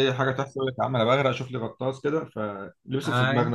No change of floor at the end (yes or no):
no